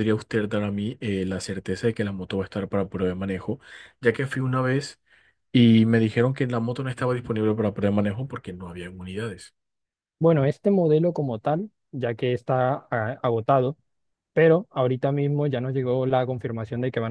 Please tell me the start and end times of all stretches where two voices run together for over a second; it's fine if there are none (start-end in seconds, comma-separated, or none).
none